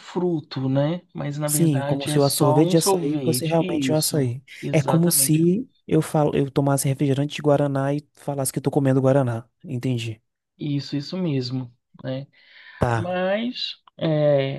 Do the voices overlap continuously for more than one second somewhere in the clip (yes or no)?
yes